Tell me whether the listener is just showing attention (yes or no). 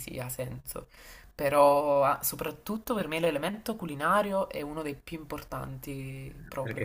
no